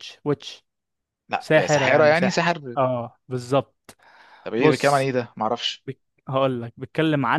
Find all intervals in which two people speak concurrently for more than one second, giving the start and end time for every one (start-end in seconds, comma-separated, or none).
1.4-2.8